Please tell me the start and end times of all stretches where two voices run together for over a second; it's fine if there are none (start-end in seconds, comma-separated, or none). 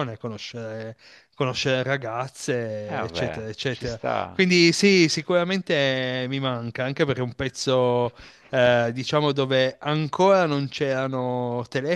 2.9-4.4